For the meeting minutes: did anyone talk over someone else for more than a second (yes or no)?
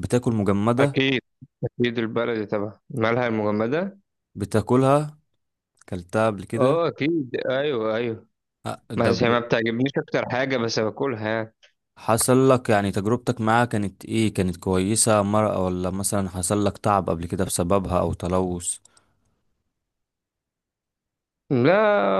no